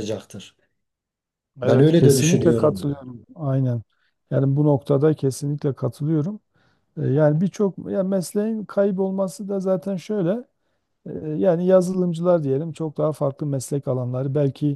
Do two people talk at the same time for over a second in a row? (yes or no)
yes